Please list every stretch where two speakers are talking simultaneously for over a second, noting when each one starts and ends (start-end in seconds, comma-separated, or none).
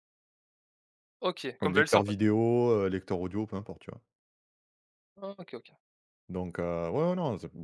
none